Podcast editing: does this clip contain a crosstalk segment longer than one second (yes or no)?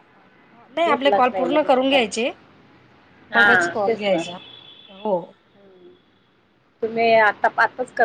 yes